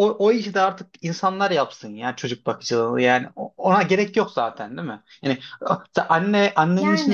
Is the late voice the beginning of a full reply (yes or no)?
no